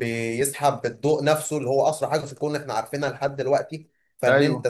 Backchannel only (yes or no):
yes